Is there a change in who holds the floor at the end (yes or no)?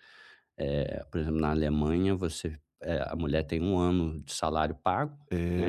no